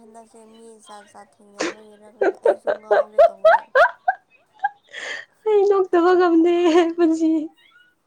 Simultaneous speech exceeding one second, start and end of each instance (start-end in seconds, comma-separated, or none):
none